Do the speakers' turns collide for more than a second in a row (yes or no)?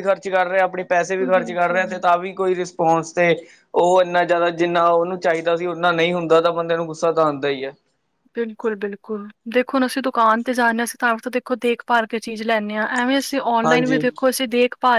no